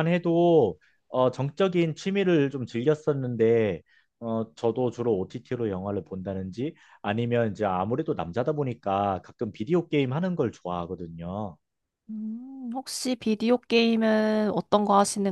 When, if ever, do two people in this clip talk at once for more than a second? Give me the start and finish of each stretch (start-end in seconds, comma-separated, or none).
none